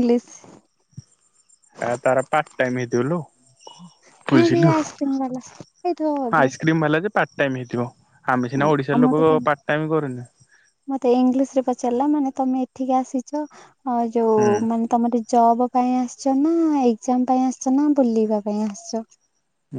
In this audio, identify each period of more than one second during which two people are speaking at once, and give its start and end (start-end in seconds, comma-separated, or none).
none